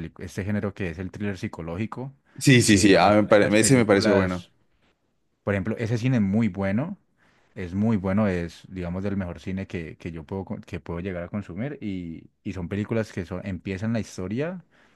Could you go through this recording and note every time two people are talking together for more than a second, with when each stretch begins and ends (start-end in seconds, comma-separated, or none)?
2.6-4.4